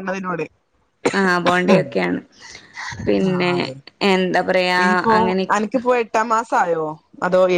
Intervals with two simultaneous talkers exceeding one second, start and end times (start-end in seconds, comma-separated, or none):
none